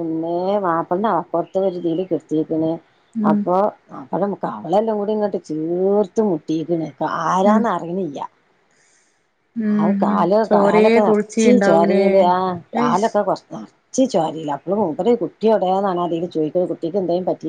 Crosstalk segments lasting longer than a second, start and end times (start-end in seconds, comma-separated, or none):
9.7-12.0